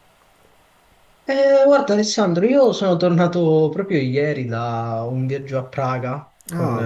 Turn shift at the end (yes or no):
no